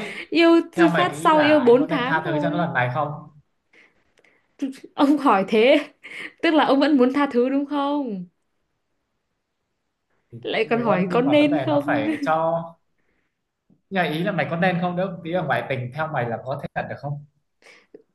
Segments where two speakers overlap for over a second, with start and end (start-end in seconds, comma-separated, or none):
0.8-2.7, 10.4-12.0